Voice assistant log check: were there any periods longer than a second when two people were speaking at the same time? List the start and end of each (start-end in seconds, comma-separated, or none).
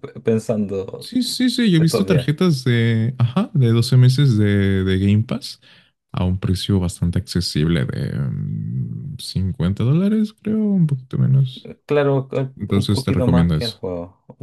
12.6-13.8